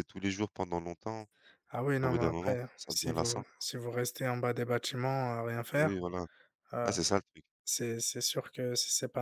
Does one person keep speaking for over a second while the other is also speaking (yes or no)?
yes